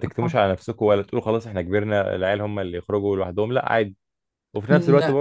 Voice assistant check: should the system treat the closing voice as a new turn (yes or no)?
no